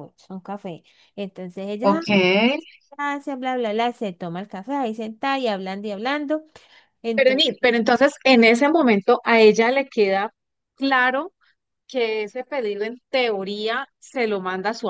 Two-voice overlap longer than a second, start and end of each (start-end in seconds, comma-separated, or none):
none